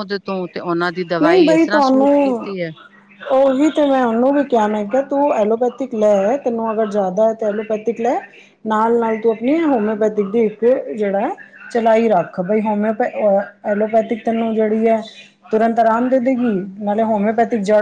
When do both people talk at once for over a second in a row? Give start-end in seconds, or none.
1.2-2.5